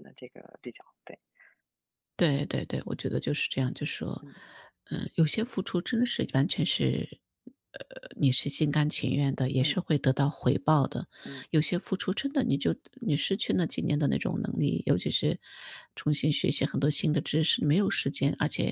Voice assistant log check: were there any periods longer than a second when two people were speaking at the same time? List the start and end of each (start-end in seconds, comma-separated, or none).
none